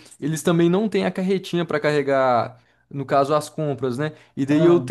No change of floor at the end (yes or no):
yes